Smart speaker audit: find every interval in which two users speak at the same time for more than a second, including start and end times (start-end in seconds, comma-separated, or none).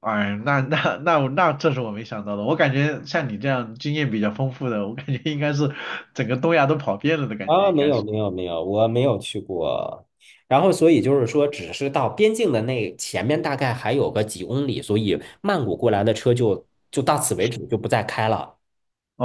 none